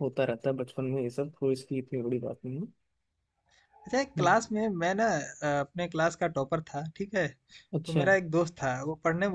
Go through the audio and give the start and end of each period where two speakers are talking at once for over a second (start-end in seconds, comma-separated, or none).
none